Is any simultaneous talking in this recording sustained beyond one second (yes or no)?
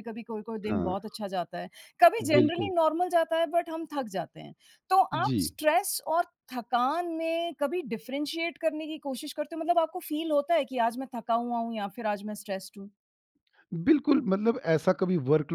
no